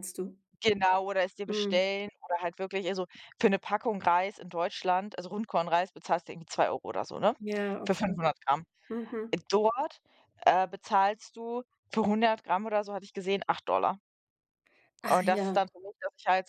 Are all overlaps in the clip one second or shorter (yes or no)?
yes